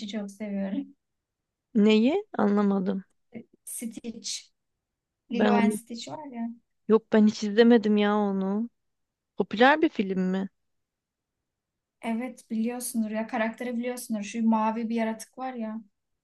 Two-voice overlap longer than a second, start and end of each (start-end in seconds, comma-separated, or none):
none